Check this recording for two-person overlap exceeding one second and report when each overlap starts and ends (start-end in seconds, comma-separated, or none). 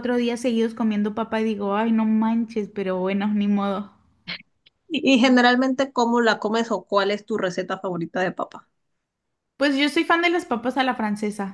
none